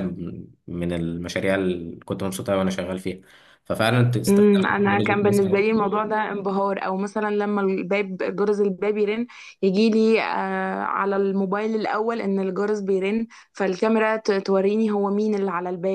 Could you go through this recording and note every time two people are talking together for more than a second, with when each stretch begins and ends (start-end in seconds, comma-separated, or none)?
4.3-5.7